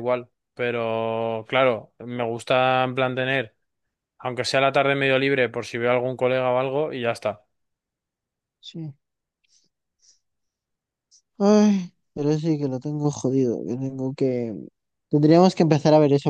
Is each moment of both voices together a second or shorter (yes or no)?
yes